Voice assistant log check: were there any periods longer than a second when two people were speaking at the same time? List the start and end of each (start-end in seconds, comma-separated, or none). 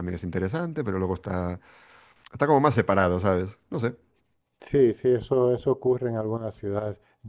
none